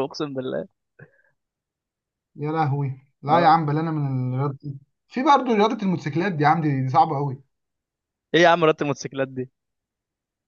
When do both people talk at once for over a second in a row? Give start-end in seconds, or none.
none